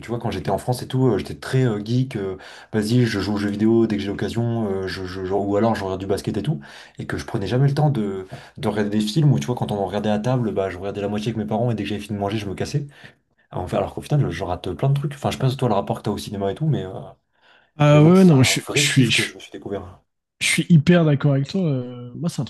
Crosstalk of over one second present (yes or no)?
yes